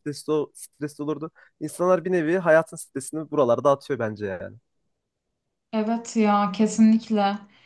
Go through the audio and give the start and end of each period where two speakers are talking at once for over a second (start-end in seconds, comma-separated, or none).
none